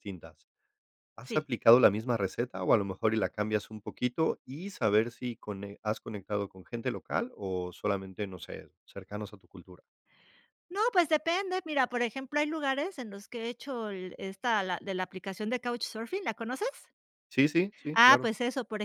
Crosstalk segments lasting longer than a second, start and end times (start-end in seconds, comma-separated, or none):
none